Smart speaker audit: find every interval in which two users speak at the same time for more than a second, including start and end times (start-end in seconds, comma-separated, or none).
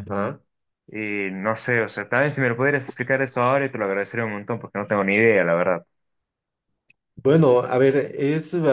none